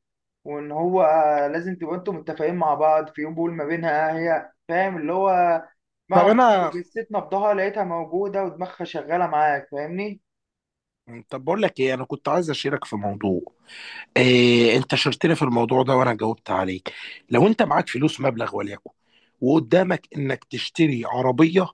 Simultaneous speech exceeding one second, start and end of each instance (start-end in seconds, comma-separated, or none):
none